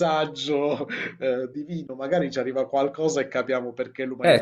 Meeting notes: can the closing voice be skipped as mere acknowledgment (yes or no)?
no